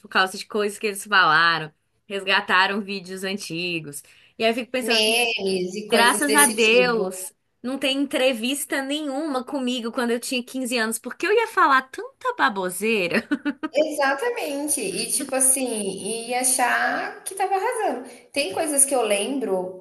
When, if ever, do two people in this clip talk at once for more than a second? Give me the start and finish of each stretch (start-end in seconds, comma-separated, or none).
5.9-7.1